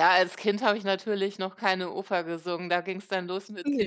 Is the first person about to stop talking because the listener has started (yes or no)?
no